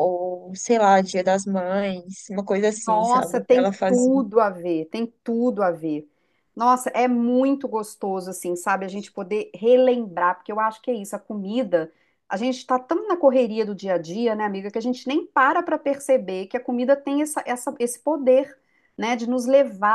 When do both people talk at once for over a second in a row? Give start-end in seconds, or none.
2.9-4.2